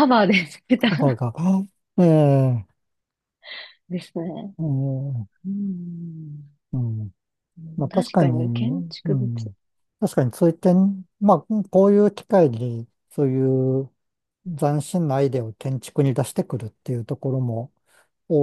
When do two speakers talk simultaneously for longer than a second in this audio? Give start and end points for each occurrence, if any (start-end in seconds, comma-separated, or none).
7.9-9.3